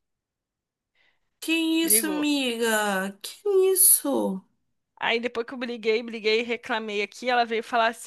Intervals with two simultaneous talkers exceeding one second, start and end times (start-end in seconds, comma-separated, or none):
none